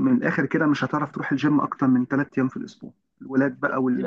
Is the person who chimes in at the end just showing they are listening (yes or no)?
yes